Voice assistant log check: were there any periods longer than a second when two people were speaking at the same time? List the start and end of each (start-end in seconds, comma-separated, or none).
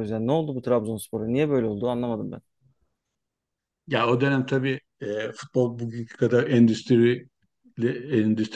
none